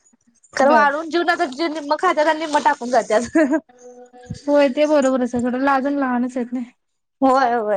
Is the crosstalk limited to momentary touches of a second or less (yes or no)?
yes